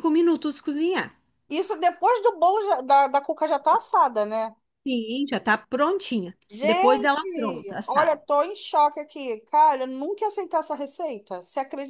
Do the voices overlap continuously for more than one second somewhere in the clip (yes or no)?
yes